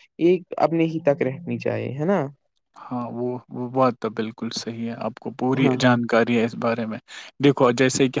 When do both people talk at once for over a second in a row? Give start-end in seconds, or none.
none